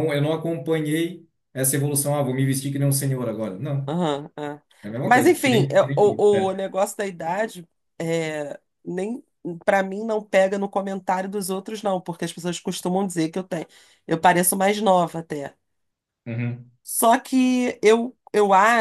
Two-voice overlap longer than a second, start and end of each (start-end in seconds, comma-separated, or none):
5.0-6.5